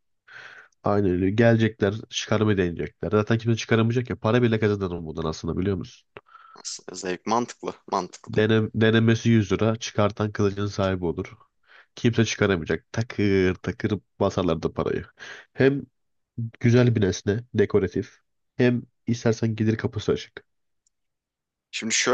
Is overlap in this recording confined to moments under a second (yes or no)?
yes